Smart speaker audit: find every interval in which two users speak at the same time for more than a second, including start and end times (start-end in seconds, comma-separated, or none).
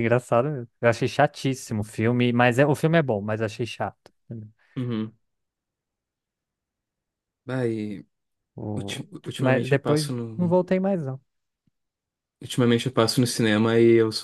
8.8-10.6